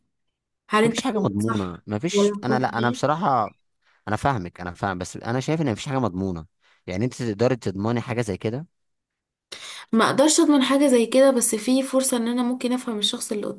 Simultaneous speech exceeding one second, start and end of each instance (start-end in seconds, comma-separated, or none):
0.8-3.0